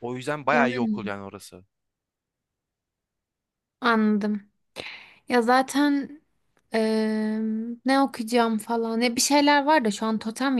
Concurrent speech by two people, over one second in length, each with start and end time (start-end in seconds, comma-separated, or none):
none